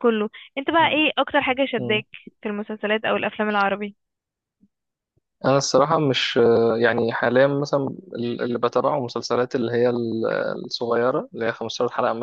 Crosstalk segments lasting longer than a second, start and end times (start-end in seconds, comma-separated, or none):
none